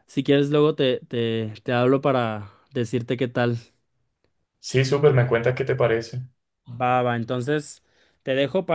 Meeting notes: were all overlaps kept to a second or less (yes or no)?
yes